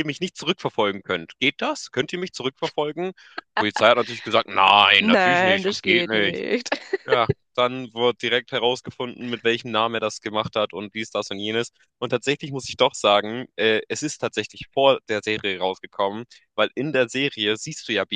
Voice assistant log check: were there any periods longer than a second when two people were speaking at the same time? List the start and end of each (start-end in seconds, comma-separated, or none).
5.0-6.4